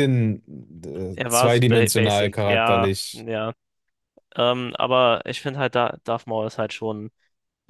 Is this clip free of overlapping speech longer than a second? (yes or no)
no